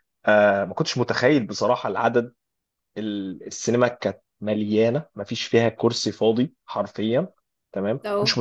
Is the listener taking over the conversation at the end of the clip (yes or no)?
no